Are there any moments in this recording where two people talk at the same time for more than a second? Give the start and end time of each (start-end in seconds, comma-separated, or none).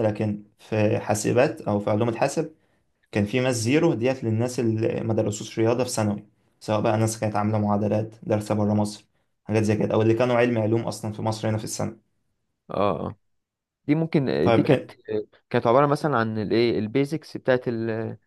none